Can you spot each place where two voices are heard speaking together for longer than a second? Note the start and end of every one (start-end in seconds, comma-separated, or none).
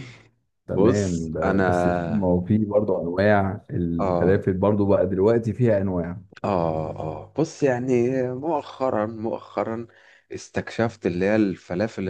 0.8-2.4